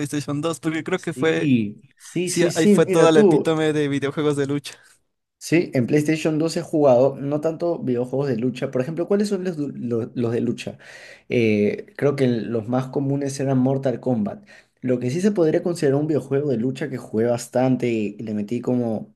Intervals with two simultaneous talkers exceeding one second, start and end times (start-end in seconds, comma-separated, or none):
2.2-3.6